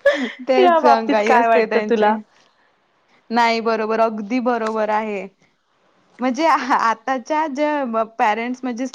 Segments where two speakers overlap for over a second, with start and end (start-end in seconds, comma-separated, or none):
0.6-2.1